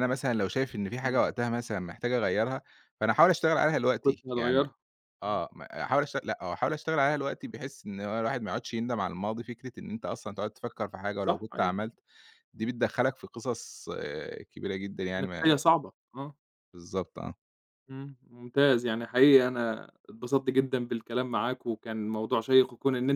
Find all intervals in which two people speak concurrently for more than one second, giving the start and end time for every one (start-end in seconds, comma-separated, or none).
none